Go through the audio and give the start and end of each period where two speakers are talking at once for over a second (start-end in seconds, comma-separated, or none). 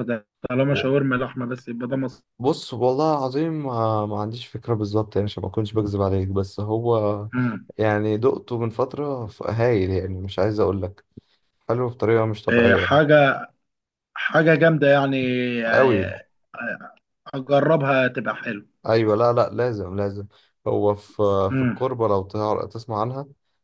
none